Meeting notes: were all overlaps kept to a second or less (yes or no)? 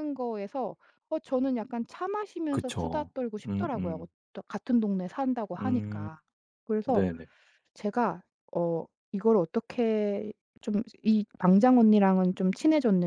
no